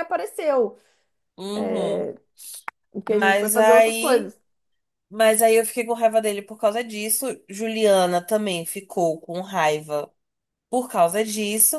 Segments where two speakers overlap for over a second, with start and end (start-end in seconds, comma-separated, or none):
3.1-4.3